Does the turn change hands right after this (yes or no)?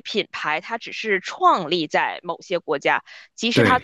no